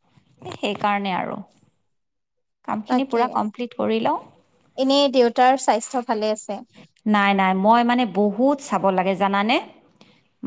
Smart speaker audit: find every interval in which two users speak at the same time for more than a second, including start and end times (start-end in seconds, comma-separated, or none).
none